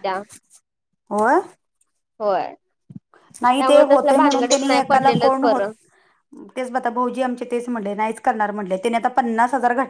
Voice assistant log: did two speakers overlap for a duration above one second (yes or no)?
yes